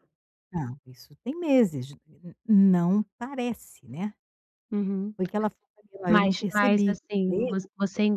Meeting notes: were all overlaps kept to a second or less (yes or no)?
no